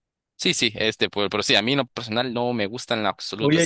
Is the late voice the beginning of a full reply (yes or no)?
yes